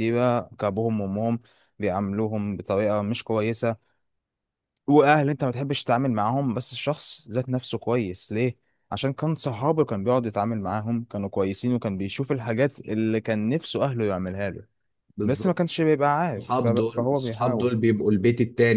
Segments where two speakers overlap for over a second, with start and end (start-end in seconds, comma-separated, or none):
16.4-17.7